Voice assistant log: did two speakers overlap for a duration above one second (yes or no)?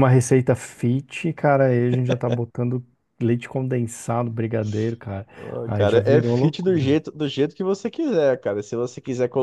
yes